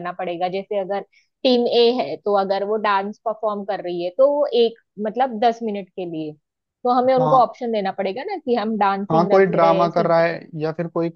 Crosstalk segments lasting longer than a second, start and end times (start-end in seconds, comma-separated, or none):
9.1-10.3